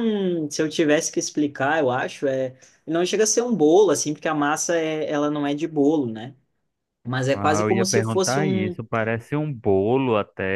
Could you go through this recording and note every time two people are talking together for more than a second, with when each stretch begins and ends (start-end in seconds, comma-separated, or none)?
7.3-8.8